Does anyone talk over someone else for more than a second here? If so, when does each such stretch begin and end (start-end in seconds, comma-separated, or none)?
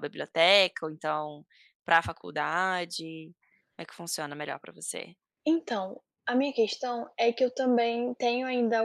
none